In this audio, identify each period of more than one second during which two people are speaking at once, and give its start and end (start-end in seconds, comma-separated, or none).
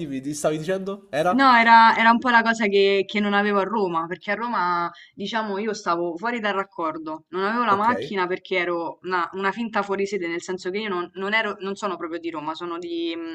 none